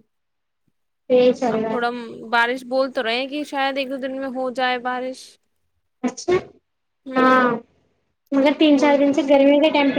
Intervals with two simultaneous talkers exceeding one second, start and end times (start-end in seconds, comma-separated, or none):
none